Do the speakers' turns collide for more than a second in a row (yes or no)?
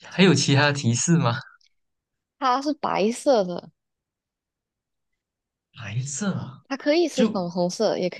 no